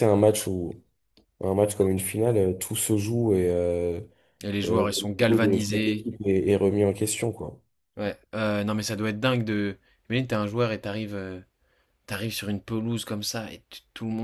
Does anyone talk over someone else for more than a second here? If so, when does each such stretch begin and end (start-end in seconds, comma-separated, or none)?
4.7-6.1